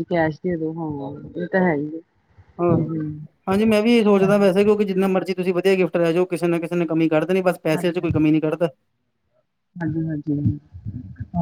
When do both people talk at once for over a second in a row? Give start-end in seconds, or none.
none